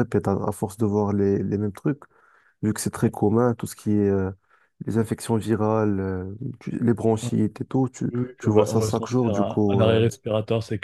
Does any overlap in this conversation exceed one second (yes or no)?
yes